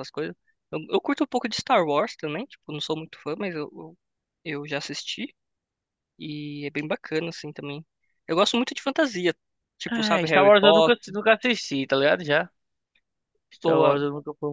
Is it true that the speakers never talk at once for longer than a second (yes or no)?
no